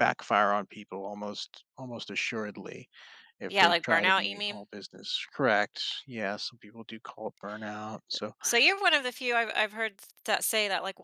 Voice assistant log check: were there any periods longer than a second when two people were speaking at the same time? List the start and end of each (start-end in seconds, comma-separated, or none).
3.5-4.7